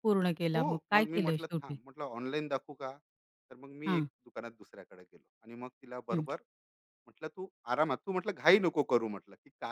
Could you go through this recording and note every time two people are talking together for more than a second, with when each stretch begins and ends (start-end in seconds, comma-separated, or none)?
0.6-1.8